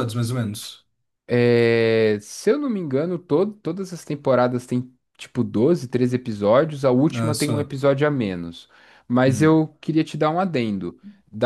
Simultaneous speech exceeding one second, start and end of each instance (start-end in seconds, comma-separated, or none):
none